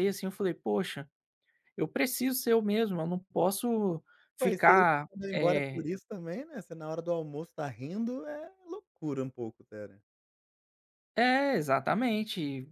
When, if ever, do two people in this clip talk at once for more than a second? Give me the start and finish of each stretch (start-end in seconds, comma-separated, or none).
4.4-5.9